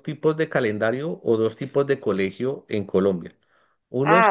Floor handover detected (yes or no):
no